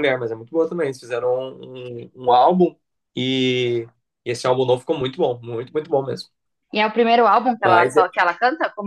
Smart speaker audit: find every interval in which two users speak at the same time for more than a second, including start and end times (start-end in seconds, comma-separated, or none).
none